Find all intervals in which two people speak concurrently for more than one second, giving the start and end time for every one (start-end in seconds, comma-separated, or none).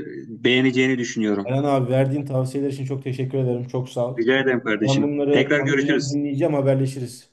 4.8-6.2